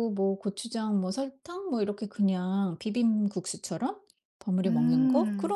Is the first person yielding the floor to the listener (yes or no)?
no